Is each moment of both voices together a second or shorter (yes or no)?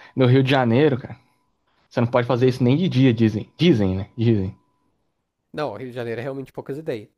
yes